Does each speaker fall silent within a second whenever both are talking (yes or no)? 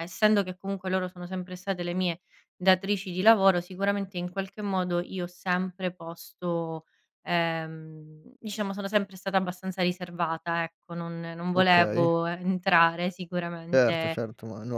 yes